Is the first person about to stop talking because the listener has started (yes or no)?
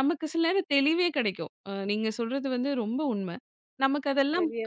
no